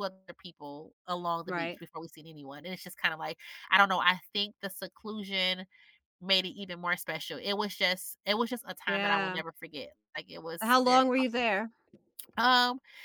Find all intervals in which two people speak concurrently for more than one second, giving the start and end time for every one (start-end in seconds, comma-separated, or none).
none